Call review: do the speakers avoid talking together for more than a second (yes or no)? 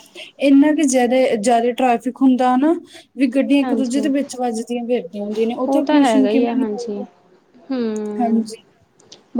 no